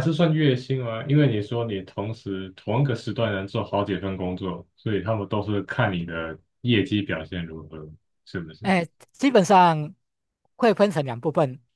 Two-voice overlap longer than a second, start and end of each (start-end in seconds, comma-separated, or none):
none